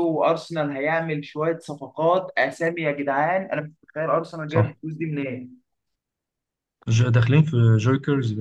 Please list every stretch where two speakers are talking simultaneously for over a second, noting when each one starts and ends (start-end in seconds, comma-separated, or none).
none